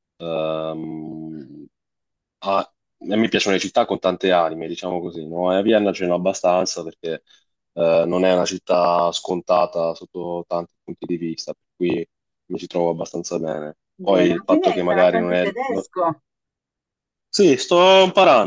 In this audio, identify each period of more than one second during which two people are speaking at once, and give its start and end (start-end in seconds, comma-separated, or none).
14.0-15.9